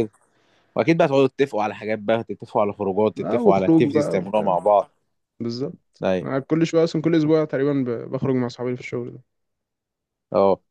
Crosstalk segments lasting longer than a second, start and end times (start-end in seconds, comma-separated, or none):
3.2-4.5